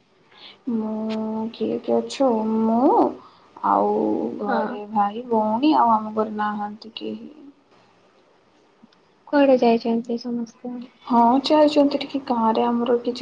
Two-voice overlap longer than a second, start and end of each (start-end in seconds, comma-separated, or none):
none